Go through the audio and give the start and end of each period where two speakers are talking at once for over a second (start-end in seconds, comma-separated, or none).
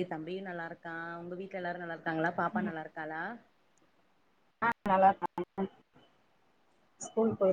none